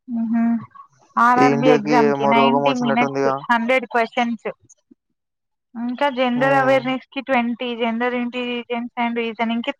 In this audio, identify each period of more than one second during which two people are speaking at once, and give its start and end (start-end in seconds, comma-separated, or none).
1.4-3.3